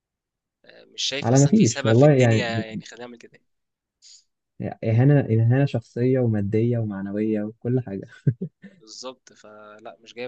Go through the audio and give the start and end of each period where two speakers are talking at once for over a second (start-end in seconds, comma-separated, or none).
1.2-2.8